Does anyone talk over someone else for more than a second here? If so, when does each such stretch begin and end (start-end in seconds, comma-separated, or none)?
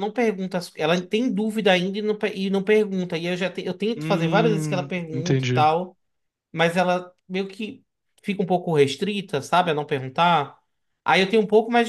4.0-5.7